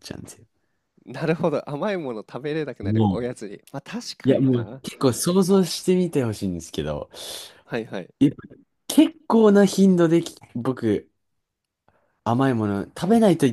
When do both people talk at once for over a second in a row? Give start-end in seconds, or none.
none